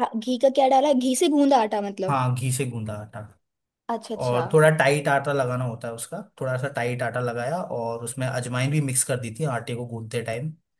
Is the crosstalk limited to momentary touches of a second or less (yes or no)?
yes